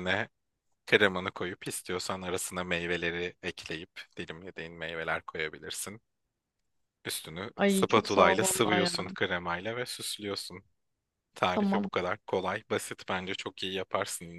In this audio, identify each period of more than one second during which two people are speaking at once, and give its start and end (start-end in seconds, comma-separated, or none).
7.6-8.9